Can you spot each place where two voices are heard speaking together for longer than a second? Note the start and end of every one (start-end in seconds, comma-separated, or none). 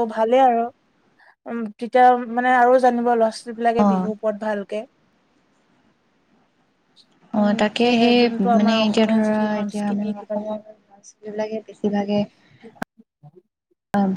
7.4-10.6